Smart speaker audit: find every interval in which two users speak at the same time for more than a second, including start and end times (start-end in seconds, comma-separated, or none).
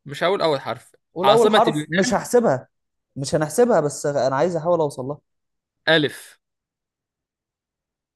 1.1-2.4